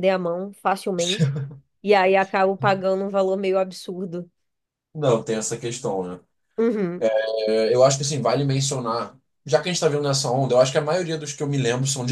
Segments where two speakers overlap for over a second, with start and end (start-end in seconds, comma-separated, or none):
none